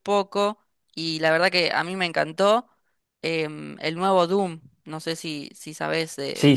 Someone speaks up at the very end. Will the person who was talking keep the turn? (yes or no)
no